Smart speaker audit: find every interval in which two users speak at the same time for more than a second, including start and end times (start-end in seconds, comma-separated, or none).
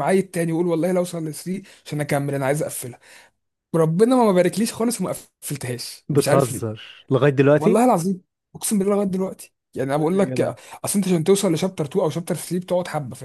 none